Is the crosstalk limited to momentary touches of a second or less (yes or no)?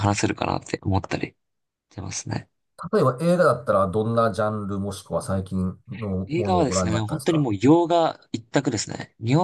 no